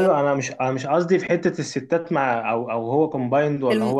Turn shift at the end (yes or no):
no